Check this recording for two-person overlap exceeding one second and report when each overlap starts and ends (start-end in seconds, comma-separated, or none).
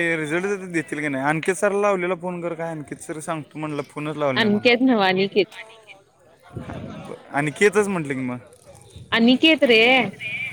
none